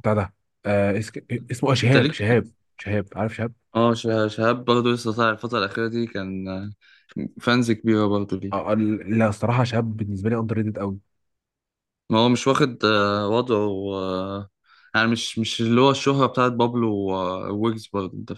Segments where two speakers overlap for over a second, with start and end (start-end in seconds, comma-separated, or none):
none